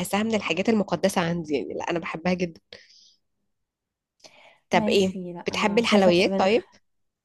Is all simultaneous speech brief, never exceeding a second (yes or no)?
no